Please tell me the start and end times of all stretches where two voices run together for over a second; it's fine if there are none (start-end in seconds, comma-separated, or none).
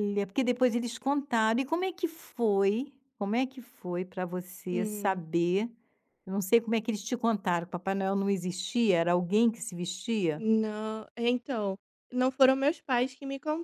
none